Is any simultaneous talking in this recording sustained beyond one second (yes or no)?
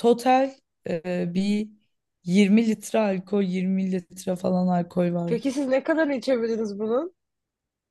no